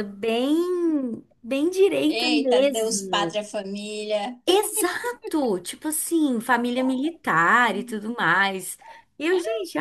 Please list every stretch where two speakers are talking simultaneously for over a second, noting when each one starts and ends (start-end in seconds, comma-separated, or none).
2.1-3.4